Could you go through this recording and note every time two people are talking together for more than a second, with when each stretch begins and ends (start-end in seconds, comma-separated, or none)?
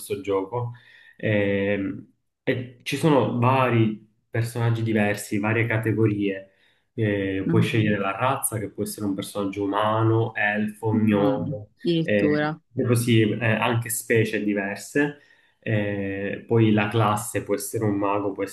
10.9-12.6